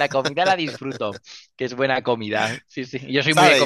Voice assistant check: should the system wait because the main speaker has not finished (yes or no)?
no